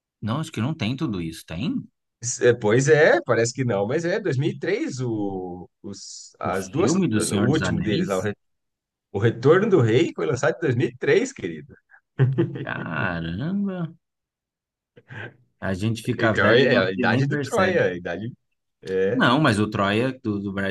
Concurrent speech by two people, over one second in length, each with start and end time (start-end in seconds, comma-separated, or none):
6.4-8.3, 16.2-17.8